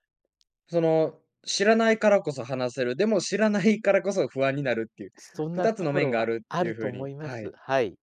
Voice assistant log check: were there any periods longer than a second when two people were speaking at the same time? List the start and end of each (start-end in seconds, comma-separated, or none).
5.5-7.5